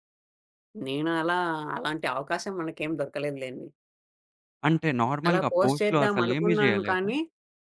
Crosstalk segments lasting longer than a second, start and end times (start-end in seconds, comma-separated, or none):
5.3-7.1